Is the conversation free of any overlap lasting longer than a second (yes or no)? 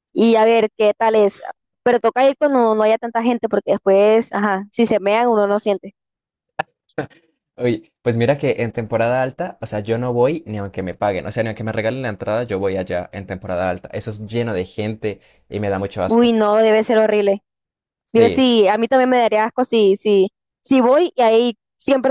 yes